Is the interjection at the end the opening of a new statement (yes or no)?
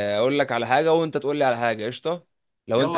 yes